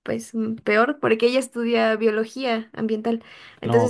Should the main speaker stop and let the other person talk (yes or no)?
no